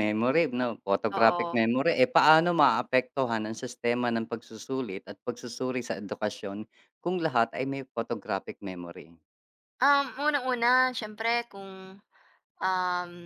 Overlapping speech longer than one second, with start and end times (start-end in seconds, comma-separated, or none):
none